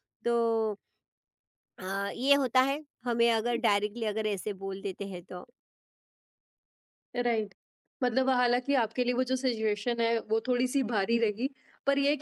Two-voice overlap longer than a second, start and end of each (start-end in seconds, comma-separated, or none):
none